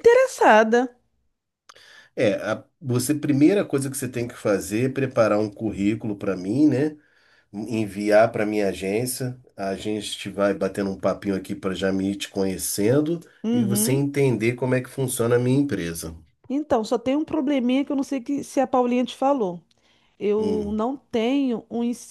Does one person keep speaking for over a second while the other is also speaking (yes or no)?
no